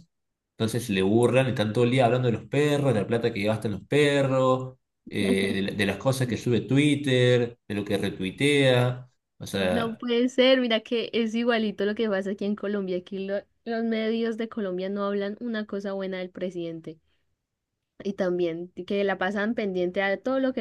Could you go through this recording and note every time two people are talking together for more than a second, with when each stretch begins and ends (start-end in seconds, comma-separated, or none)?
none